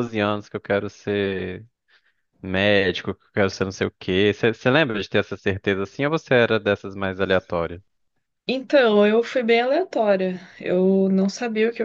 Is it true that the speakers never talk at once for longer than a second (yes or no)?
yes